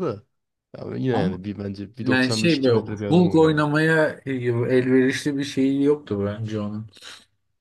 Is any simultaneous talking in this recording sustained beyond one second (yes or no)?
yes